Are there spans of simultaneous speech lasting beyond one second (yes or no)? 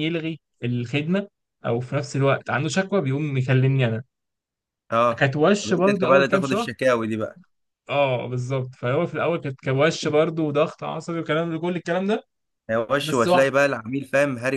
yes